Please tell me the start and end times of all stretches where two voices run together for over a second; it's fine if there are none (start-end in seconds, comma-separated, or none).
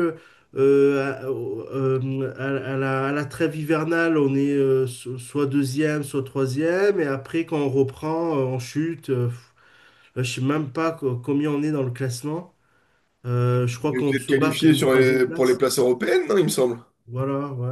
13.9-15.6